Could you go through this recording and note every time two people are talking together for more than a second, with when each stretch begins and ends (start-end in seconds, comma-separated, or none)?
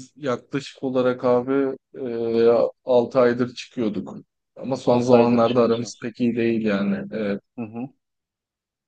4.9-6.1